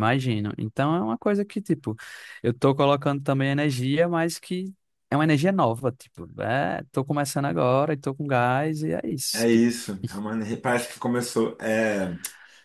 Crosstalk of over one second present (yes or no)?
no